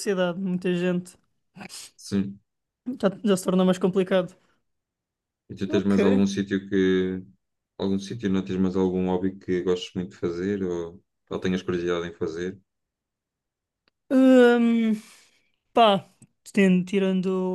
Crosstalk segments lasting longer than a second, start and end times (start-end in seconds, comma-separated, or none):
none